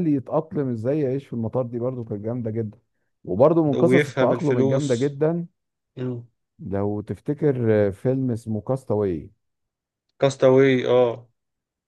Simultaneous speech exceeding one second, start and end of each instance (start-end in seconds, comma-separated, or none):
3.8-5.2